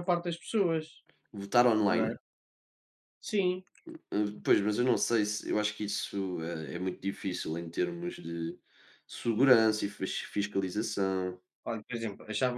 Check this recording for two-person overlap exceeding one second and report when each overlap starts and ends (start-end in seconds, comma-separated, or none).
none